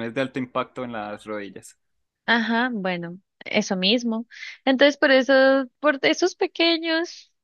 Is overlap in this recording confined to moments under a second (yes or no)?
yes